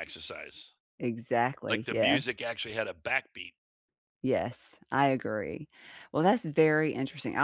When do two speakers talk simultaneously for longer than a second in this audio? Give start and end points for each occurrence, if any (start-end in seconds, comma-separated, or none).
none